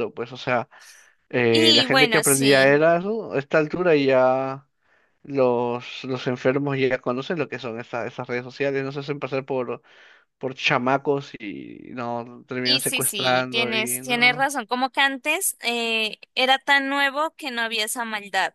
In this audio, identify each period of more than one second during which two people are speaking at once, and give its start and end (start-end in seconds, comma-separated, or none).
1.5-2.8, 12.6-14.5